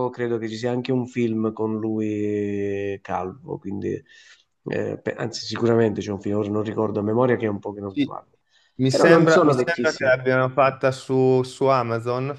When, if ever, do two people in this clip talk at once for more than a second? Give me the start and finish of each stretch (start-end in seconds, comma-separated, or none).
8.9-10.2